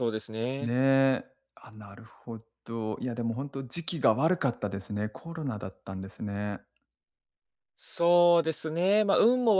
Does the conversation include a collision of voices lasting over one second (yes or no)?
no